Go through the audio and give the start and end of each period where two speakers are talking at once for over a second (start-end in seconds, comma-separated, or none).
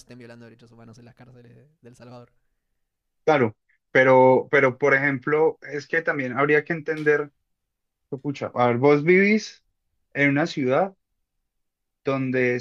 none